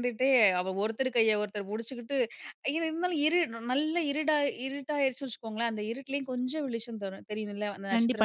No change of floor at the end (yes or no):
no